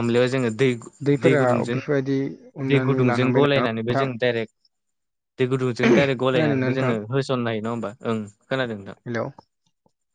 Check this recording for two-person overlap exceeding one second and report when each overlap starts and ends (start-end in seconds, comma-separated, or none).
2.7-4.1